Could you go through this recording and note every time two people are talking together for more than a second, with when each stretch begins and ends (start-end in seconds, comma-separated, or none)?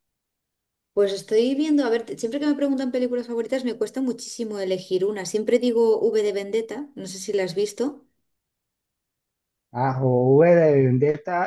none